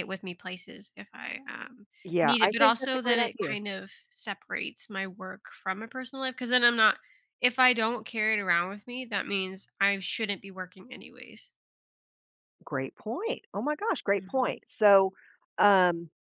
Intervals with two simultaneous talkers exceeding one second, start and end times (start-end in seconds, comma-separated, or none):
2.0-3.6